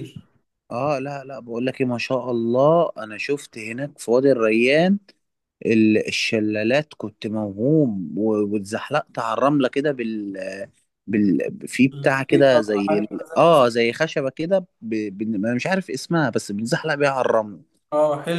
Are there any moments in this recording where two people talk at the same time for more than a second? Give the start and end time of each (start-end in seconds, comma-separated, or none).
11.9-13.8